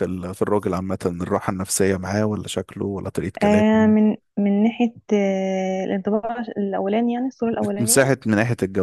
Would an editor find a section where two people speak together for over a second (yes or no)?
no